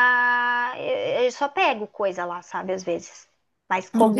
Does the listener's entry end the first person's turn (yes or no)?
yes